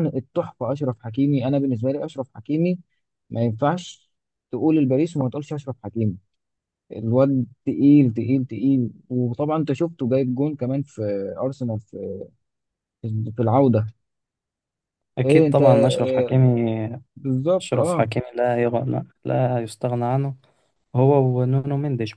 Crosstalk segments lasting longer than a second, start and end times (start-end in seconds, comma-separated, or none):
15.2-16.4